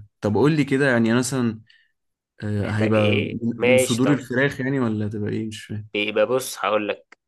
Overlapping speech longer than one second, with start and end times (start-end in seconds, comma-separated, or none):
2.6-4.2